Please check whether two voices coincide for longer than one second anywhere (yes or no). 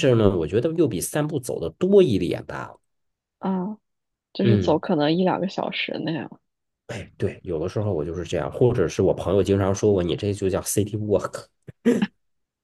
no